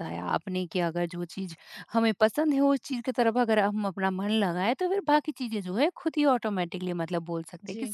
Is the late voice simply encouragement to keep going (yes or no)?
yes